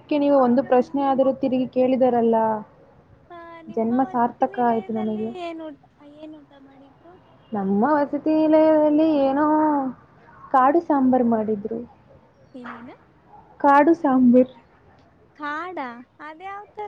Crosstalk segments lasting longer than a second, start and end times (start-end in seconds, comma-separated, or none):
3.8-5.3